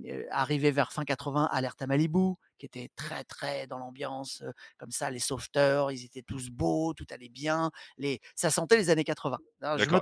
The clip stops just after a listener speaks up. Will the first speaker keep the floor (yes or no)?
no